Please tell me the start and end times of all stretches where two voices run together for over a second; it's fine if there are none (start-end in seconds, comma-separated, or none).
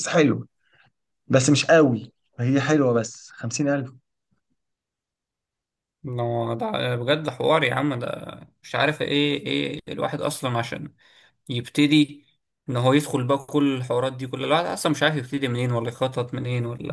none